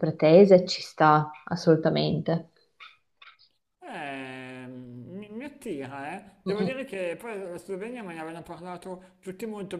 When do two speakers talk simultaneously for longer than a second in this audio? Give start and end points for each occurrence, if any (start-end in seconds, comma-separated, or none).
none